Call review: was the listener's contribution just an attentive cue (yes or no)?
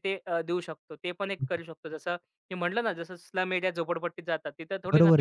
no